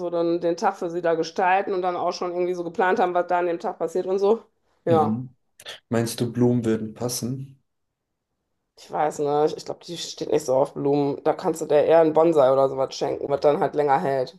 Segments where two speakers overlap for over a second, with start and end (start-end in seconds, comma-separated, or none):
none